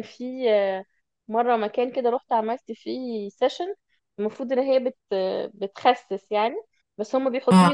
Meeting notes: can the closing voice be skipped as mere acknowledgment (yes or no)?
yes